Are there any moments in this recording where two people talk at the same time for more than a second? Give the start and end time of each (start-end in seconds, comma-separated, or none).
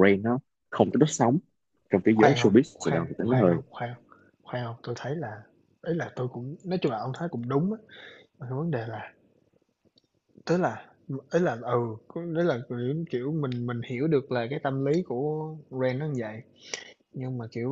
2.1-3.6